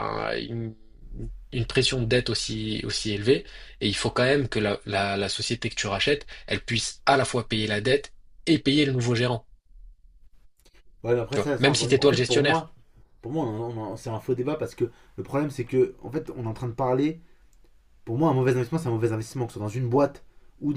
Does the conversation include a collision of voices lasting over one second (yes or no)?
yes